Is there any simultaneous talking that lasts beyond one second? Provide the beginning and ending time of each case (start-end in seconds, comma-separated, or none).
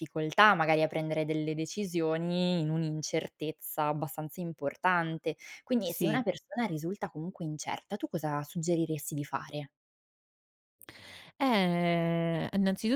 none